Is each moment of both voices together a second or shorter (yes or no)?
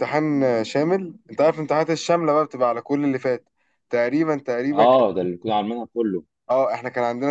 yes